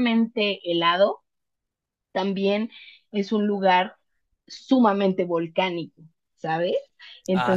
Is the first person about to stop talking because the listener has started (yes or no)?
yes